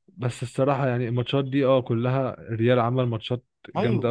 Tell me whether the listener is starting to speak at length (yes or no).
yes